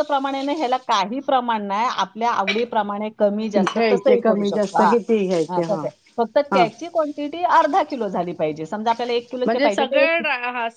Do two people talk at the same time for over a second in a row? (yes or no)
yes